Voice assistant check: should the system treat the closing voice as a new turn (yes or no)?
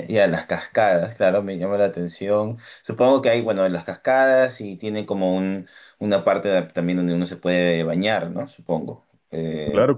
yes